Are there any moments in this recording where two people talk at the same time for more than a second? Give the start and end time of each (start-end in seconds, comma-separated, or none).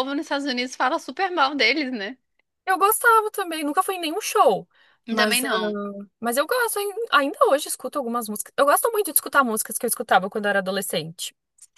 none